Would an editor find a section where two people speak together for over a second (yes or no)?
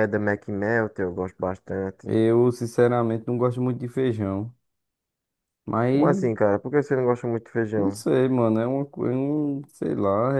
no